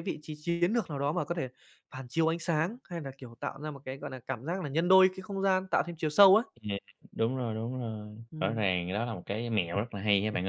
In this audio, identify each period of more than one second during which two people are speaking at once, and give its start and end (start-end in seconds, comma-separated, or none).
none